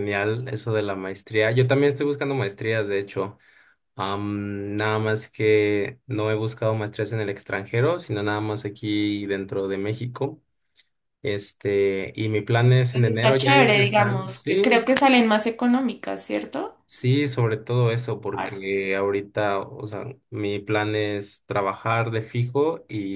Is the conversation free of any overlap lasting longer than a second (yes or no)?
no